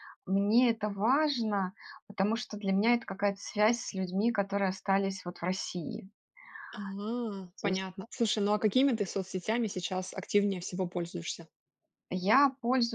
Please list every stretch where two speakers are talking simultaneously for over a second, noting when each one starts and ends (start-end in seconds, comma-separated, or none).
none